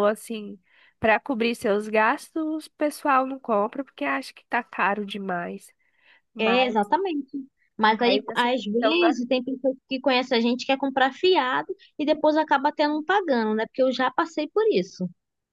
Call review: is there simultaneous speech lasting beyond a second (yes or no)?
yes